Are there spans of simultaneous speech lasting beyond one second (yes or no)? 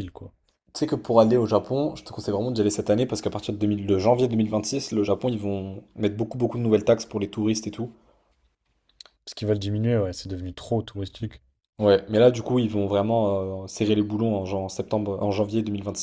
no